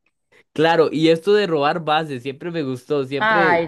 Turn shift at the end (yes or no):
yes